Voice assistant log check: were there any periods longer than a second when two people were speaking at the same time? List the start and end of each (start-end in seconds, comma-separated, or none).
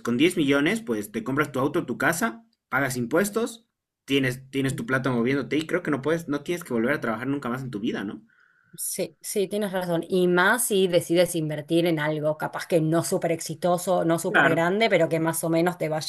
none